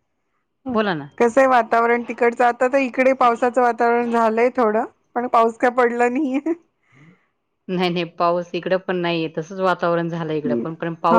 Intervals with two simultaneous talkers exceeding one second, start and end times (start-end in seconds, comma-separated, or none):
none